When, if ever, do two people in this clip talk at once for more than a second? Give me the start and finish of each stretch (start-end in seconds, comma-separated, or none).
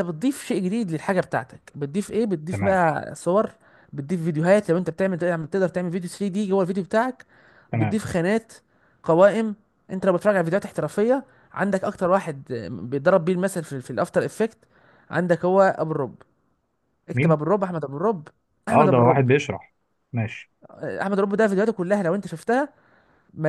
none